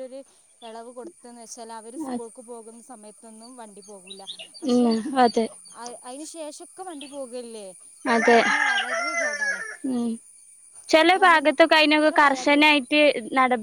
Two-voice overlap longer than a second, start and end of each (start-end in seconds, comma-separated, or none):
11.0-12.7